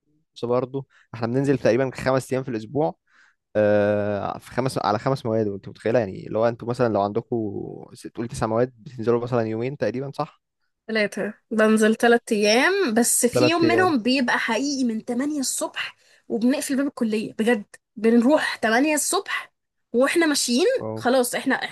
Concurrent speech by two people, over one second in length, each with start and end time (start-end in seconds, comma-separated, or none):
none